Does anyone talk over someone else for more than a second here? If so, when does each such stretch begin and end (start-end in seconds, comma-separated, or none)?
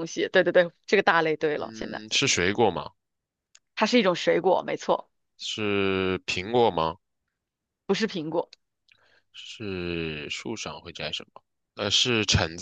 none